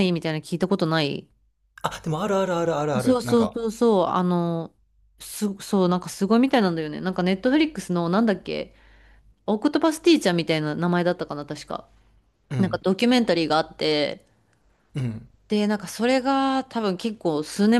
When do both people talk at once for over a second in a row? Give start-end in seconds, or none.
none